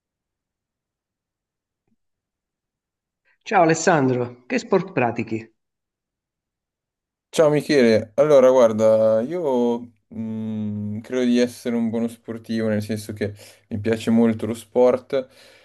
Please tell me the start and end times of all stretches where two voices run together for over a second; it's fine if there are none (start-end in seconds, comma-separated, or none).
none